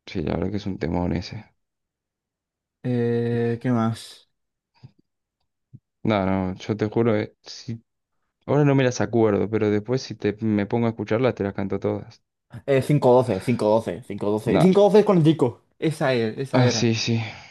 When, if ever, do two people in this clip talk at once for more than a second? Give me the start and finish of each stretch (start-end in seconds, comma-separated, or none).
none